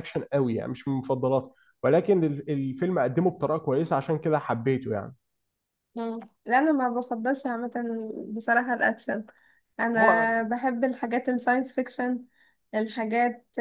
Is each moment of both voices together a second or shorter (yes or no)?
yes